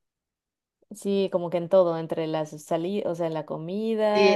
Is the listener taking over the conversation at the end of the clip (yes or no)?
yes